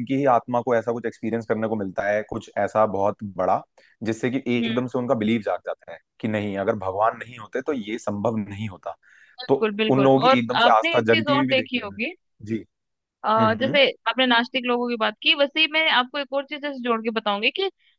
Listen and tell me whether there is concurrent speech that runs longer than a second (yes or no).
yes